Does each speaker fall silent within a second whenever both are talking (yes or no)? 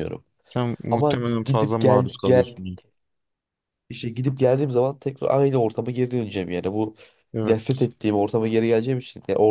no